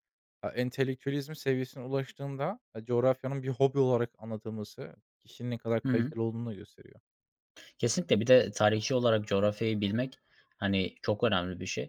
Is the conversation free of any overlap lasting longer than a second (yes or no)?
yes